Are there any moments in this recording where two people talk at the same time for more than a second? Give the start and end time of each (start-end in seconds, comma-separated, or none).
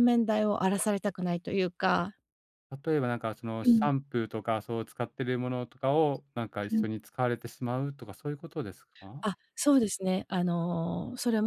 none